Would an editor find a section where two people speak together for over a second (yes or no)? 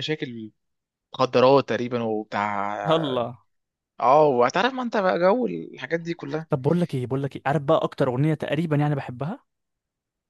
no